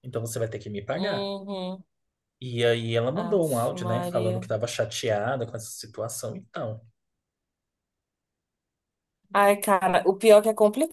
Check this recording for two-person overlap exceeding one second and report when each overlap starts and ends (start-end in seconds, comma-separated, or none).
3.1-4.5